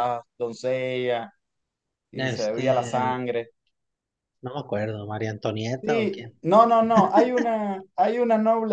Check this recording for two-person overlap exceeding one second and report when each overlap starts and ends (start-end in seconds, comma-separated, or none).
none